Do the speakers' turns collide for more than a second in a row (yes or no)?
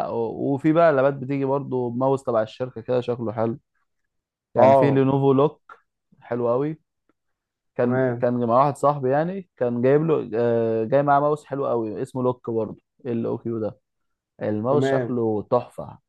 no